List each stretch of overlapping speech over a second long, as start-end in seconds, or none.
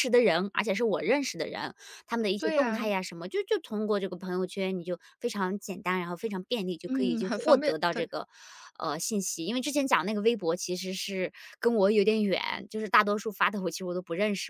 6.9-8.1